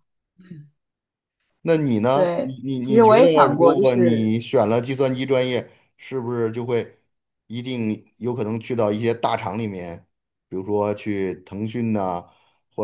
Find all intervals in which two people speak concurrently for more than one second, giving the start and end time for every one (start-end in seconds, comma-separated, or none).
2.1-4.3